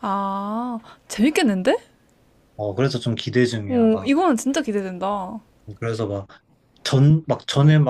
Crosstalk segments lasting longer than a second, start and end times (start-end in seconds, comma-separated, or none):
none